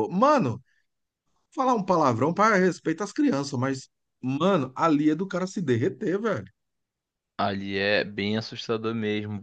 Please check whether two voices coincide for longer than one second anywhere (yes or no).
no